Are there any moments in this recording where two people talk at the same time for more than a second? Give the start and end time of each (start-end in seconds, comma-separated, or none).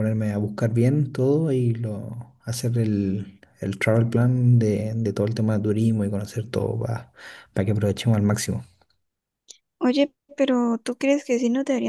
none